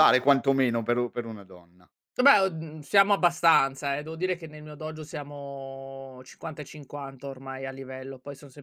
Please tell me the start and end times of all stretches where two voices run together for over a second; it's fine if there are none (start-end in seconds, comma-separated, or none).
none